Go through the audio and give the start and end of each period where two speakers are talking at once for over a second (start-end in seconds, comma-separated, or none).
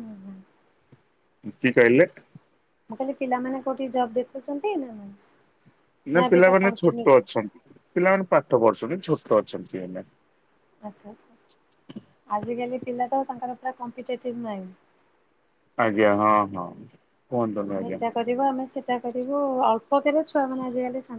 none